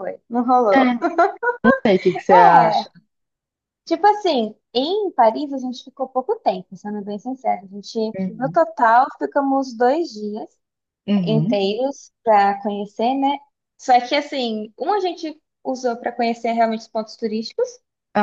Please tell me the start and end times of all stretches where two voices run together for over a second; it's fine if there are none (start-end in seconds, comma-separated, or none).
none